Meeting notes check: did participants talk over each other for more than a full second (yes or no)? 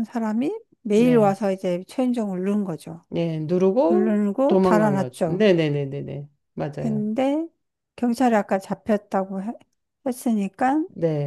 yes